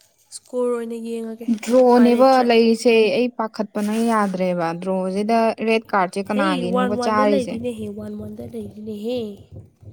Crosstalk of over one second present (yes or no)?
no